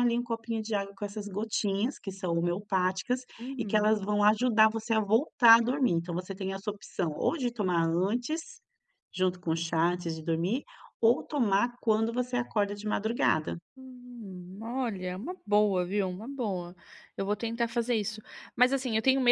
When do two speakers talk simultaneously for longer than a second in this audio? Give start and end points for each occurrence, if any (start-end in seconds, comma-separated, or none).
none